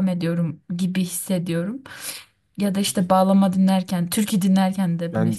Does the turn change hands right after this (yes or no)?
yes